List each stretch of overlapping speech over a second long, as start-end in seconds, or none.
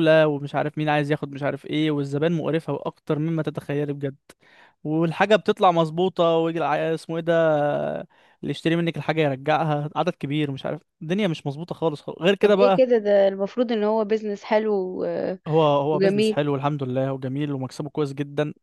none